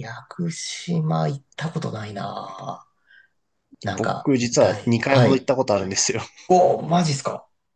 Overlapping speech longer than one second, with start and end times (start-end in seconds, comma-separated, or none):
4.0-5.5